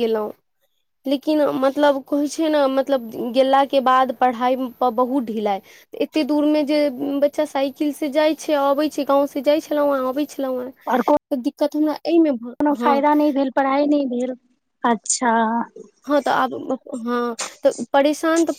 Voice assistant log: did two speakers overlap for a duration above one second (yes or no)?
no